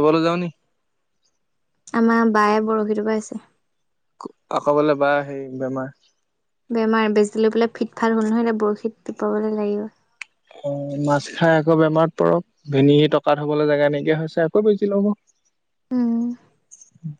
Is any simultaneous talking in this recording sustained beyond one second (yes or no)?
no